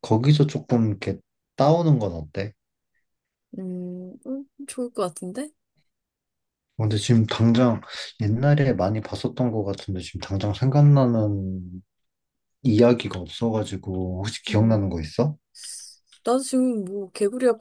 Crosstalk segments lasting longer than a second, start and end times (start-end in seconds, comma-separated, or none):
none